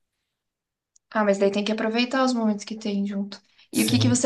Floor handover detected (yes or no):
no